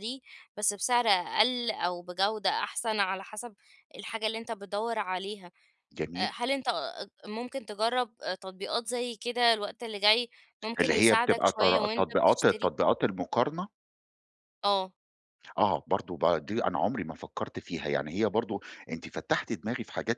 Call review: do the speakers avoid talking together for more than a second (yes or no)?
no